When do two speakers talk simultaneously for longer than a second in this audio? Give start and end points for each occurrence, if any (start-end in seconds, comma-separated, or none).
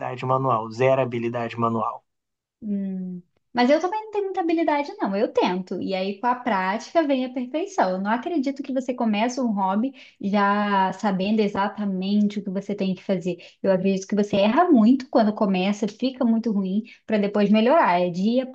none